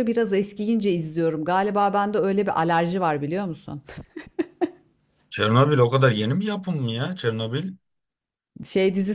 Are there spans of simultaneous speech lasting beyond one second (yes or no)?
no